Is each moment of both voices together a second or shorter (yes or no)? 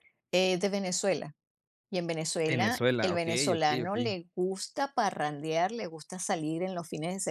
no